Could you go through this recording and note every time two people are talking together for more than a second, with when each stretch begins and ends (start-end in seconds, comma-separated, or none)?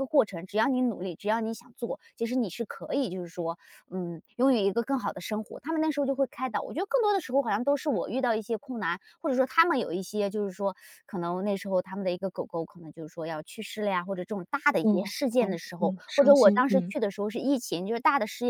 14.8-16.9